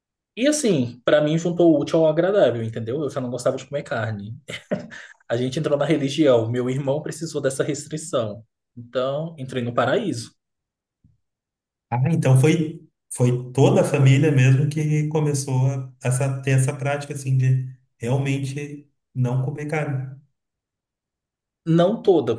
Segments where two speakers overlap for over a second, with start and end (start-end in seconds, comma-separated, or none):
none